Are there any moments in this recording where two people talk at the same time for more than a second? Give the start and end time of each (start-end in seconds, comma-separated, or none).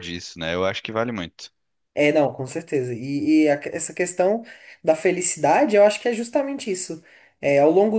none